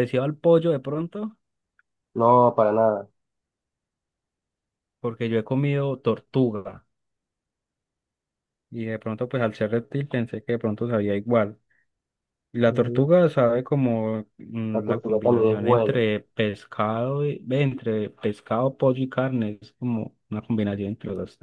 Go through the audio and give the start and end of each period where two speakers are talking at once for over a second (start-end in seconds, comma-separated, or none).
14.7-16.0